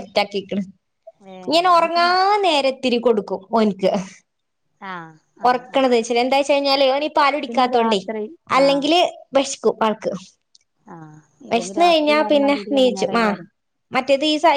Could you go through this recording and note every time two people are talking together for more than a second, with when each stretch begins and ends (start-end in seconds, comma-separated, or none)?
11.5-13.4